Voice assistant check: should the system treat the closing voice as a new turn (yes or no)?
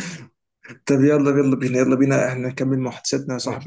yes